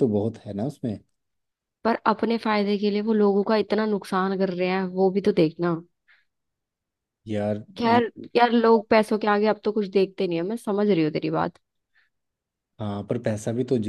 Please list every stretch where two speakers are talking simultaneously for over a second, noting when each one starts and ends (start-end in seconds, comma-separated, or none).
none